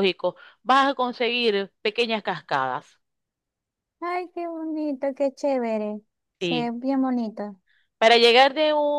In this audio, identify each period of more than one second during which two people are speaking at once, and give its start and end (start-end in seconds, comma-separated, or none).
none